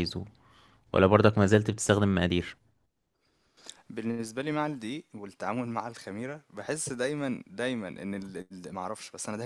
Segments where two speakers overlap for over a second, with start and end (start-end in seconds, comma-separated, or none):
none